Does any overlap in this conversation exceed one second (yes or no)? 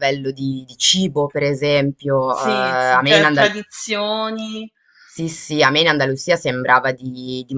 yes